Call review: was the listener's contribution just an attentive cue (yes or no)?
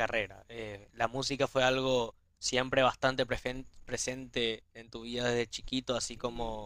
no